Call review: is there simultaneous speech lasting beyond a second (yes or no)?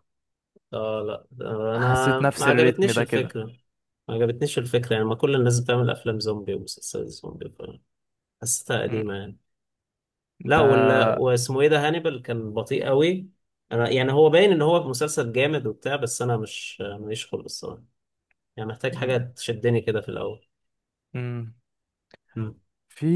yes